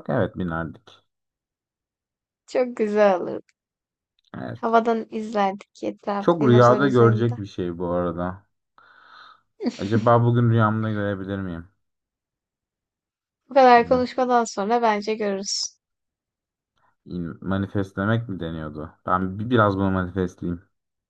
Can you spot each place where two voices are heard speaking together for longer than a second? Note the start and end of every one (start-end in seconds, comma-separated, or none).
6.2-7.4